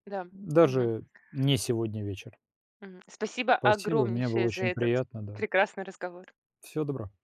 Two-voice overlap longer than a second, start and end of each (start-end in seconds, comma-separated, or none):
3.6-5.4